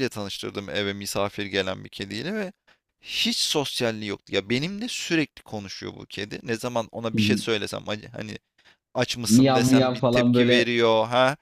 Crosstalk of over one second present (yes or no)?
yes